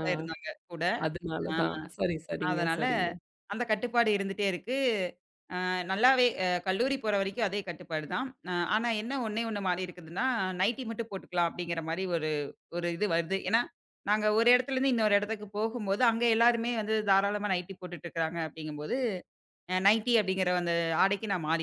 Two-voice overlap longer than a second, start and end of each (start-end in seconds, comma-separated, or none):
none